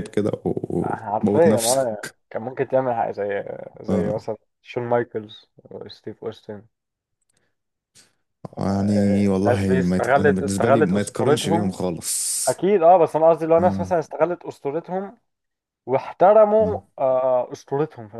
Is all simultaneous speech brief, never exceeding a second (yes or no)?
no